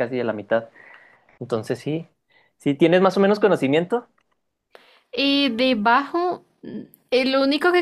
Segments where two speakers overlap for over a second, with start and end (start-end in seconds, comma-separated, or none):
none